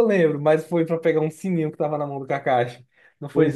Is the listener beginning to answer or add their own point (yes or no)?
yes